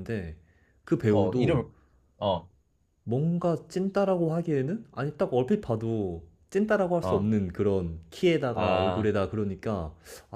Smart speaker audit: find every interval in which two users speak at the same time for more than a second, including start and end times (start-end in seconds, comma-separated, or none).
none